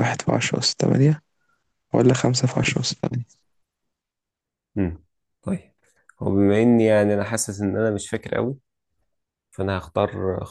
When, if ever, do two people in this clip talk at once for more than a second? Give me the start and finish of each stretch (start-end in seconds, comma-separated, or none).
none